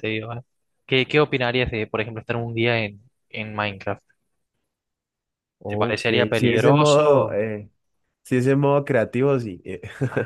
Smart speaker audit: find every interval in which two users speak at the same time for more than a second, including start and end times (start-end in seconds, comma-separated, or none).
5.7-7.4